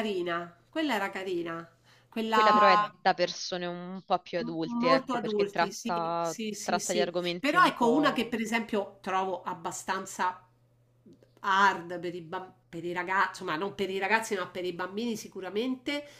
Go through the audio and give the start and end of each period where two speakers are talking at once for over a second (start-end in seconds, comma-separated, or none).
4.3-8.3